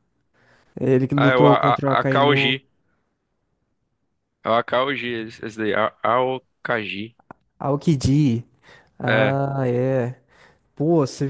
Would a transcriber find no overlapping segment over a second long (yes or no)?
no